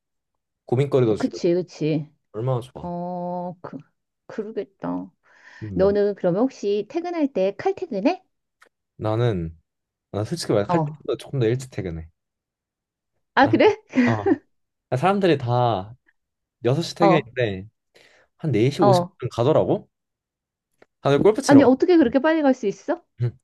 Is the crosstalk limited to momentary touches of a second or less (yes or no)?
yes